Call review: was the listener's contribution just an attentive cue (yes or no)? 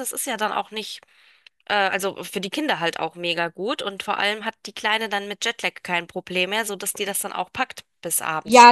no